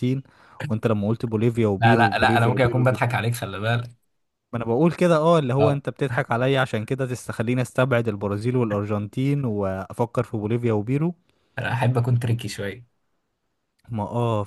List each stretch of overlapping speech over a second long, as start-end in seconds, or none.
1.8-3.0